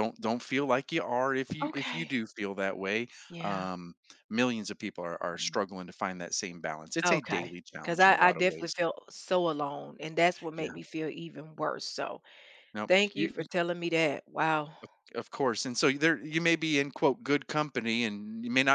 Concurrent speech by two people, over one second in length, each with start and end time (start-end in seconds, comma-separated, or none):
7.0-8.8